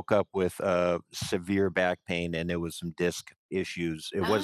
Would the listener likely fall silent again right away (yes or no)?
yes